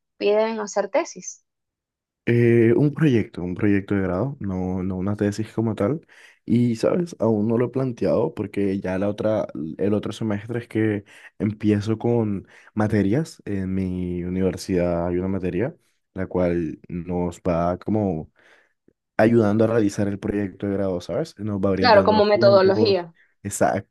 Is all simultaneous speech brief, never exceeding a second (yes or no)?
no